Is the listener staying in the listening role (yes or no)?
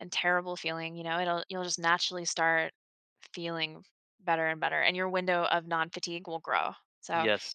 yes